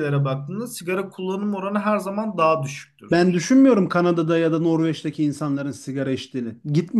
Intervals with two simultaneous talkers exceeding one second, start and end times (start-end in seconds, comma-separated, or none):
none